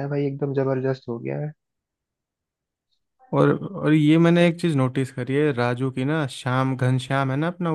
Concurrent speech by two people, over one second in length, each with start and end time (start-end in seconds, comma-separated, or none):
none